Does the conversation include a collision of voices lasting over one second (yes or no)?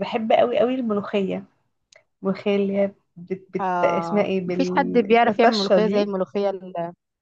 yes